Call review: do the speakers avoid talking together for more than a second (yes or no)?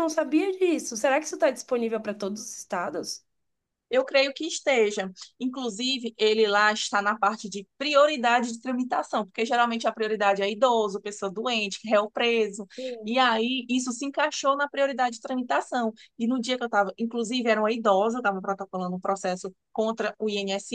yes